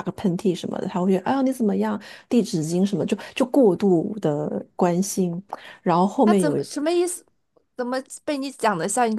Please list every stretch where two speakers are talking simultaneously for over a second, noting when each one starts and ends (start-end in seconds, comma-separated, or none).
none